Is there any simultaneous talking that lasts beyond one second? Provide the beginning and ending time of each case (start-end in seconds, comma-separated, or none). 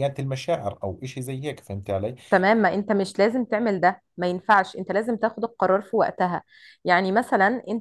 none